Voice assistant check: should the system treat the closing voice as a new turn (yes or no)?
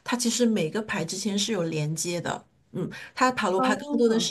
no